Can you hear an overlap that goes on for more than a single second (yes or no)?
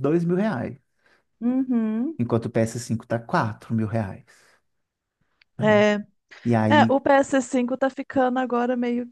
no